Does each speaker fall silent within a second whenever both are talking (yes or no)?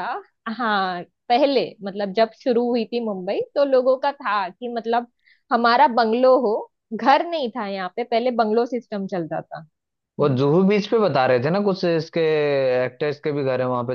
yes